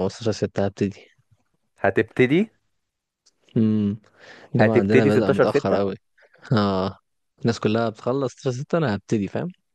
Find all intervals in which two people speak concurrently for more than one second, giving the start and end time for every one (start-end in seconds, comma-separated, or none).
4.5-5.8